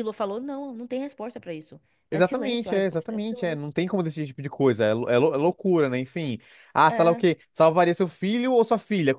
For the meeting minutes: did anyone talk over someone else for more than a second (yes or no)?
yes